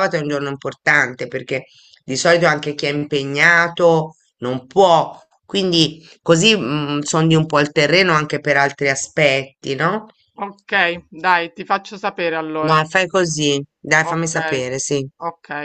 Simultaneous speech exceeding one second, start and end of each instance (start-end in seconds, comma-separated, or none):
none